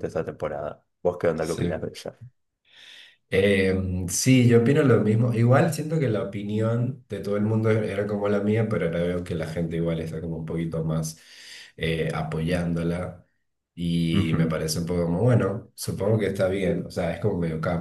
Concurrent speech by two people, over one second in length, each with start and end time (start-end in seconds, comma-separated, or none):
none